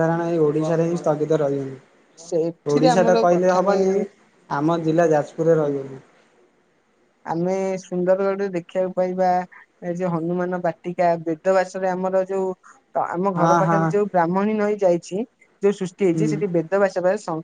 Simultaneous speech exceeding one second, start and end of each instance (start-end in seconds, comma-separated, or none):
2.3-3.9